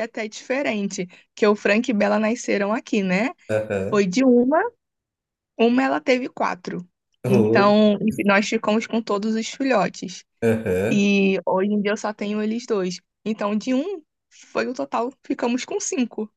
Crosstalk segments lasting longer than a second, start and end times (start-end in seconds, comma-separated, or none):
none